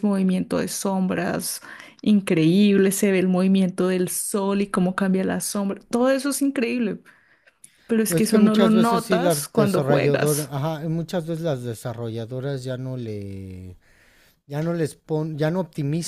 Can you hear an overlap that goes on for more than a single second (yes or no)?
yes